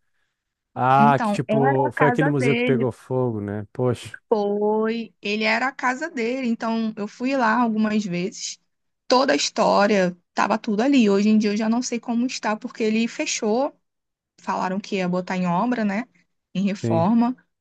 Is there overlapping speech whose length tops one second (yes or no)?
yes